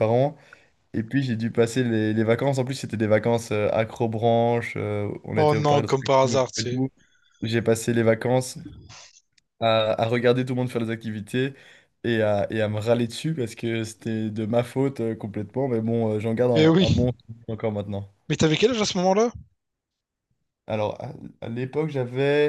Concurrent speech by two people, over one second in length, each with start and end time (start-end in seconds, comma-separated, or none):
5.4-6.8